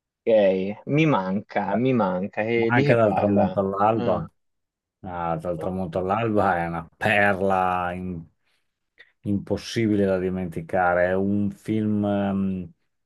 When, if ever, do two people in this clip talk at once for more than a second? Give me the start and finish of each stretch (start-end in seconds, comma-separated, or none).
2.5-4.3